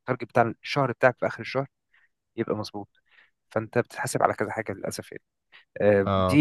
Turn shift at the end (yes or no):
no